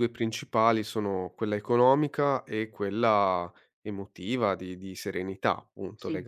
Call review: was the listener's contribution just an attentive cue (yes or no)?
yes